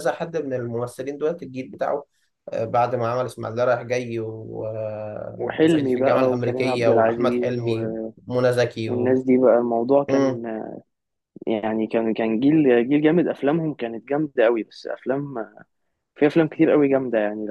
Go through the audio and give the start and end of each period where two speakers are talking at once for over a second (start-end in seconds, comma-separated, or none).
5.4-7.8